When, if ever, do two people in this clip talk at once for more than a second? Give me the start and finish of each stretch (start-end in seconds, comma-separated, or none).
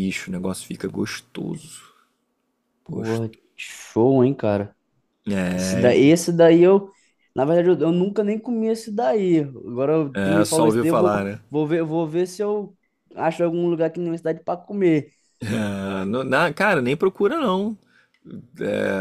10.1-11.4